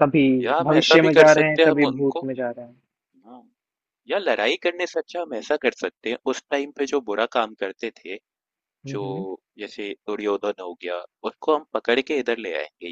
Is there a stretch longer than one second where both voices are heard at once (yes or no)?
yes